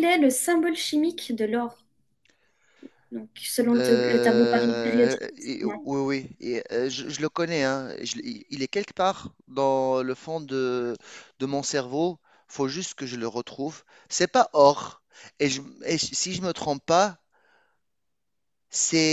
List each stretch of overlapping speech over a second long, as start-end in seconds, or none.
3.7-5.9